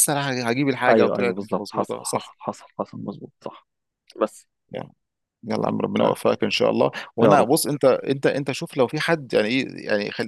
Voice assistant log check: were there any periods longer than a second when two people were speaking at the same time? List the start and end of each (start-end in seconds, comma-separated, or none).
0.9-2.4